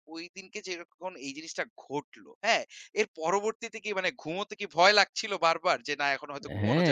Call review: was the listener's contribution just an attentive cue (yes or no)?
no